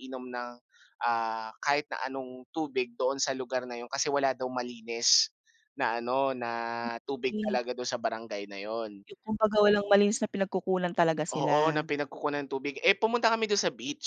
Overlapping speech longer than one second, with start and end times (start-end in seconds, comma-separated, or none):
none